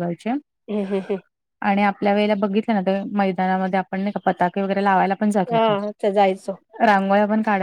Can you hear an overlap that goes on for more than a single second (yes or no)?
no